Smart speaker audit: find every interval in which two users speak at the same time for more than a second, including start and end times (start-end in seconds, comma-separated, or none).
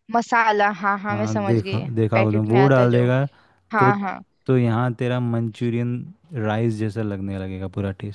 1.1-3.0